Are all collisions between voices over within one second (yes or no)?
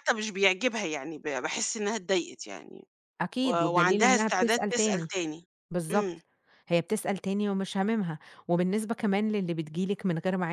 no